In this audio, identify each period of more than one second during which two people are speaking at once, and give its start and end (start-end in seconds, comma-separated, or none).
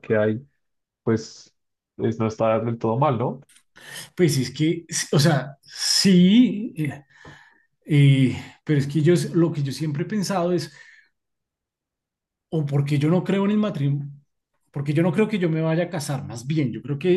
none